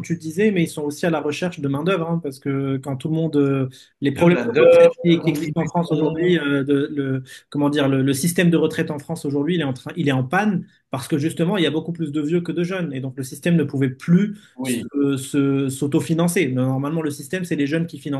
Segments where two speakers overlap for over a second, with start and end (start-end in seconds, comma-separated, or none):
4.2-6.4